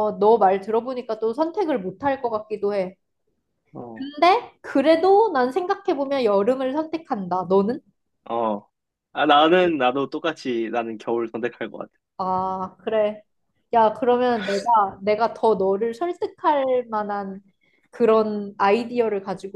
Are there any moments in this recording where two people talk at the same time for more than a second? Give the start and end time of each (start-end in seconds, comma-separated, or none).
none